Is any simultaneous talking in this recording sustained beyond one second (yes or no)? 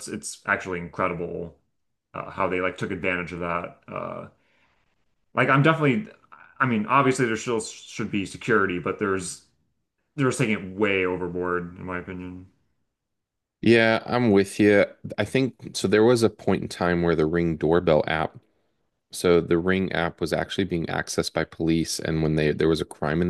no